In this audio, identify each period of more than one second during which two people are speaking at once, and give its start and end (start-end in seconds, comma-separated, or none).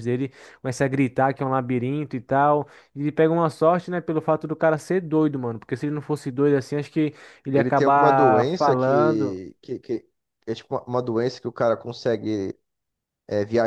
7.5-9.4